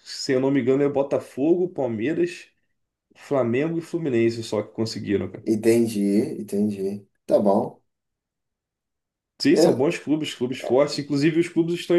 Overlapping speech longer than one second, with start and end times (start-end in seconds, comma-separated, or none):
none